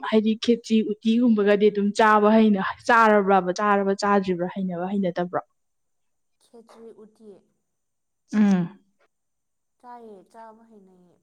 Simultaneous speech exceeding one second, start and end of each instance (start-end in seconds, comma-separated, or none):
none